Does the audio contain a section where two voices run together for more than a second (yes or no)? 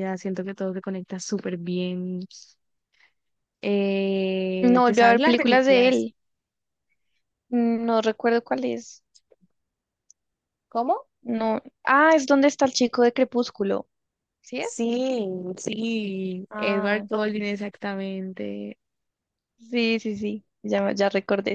yes